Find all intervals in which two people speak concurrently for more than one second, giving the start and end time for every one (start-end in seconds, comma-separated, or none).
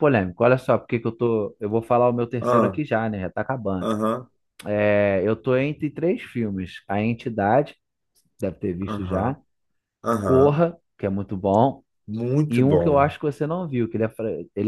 none